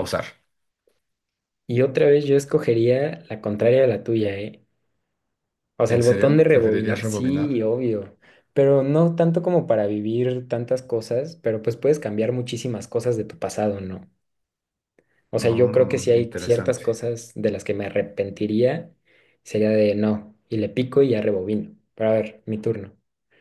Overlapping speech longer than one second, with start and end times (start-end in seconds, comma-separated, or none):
5.9-7.5, 15.4-16.8